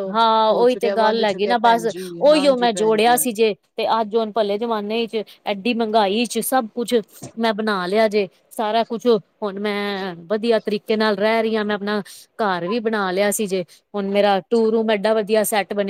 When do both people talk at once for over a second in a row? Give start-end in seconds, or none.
0.5-3.1